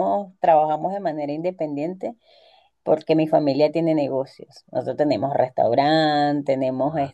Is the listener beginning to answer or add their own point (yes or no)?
no